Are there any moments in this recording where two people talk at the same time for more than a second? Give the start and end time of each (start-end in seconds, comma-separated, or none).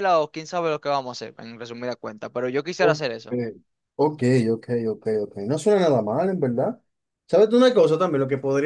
none